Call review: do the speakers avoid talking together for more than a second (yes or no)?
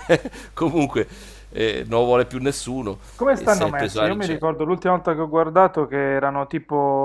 no